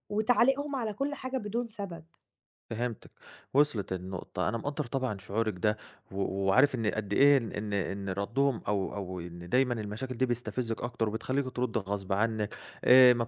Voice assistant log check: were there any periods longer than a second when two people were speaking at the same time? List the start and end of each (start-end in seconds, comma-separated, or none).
none